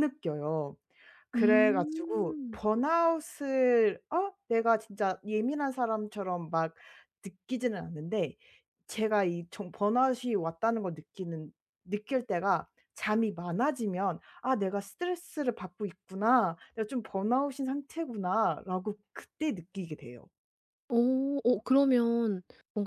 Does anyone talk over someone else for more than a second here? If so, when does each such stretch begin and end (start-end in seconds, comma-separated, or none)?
1.3-2.6